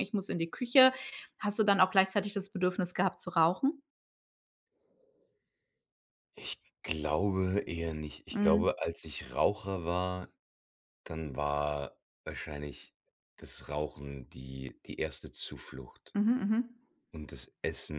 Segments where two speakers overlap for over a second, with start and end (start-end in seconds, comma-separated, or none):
none